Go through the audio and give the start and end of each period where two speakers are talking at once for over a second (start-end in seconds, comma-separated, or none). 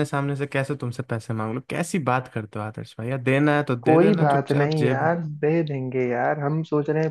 3.8-5.1